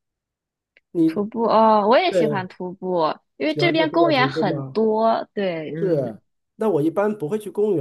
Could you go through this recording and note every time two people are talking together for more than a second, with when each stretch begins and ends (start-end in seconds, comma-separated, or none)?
3.5-4.8